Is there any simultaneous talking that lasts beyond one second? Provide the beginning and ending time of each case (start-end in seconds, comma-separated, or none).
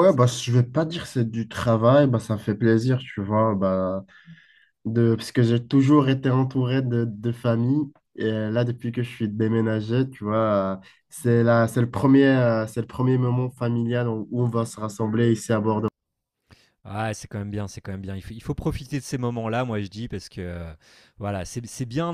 none